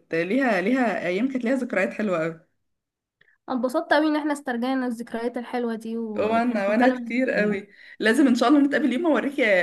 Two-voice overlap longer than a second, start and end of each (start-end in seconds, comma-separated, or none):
6.2-7.6